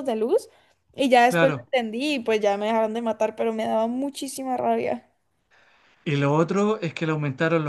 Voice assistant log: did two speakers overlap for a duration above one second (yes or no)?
no